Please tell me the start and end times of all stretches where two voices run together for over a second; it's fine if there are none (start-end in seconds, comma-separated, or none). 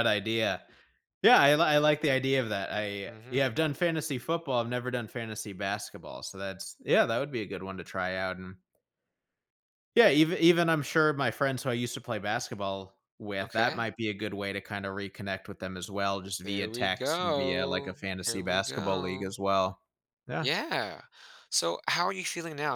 16.4-19.3